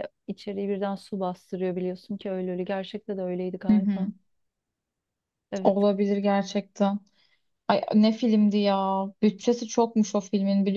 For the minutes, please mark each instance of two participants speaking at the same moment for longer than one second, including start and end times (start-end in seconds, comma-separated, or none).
none